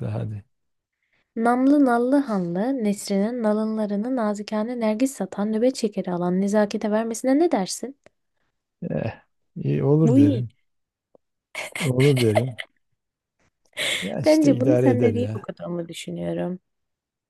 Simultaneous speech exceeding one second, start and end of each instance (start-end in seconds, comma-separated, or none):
14.2-15.5